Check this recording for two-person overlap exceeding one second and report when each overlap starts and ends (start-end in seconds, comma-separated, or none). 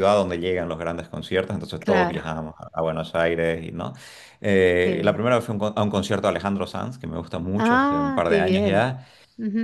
7.6-8.9